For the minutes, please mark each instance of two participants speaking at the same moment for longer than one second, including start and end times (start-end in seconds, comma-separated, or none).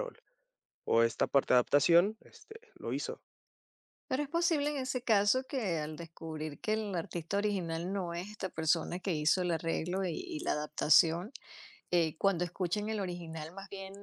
none